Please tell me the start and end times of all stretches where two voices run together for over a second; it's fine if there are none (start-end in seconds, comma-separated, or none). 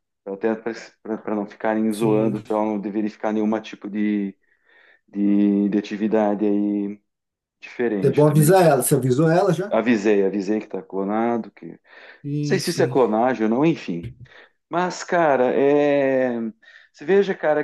none